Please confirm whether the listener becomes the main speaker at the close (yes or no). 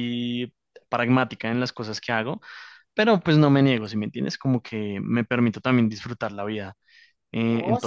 yes